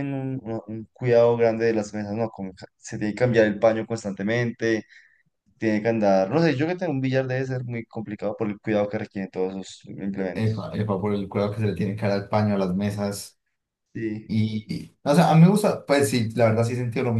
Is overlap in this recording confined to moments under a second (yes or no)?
yes